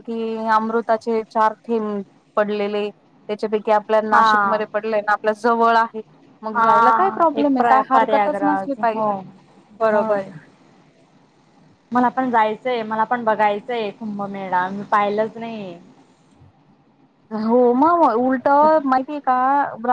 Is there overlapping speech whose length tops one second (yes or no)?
yes